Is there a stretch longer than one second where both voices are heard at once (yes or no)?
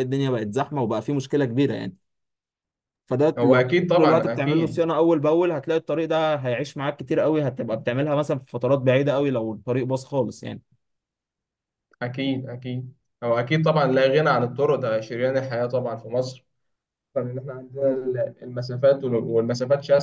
yes